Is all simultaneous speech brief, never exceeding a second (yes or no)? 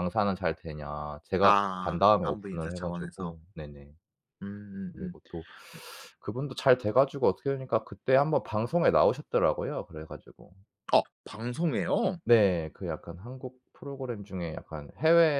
no